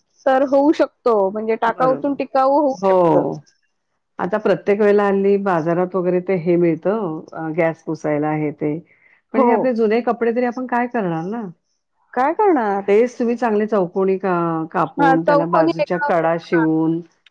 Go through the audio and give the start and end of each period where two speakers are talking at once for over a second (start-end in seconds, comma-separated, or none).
15.0-16.5